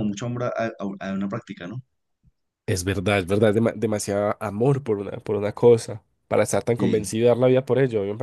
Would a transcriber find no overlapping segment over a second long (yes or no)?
yes